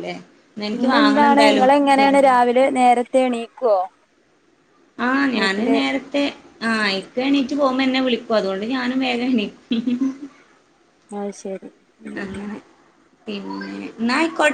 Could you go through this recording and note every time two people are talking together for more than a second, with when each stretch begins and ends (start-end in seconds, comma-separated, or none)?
0.7-2.4